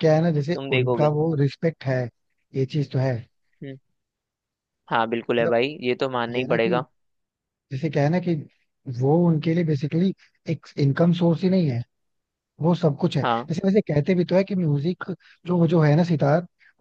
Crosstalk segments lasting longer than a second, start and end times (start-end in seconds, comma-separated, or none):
none